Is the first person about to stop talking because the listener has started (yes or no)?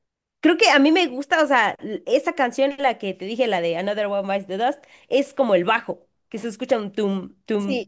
no